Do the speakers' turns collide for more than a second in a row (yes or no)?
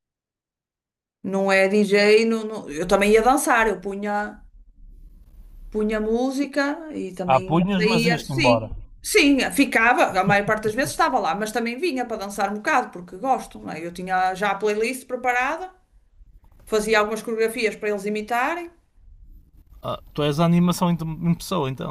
yes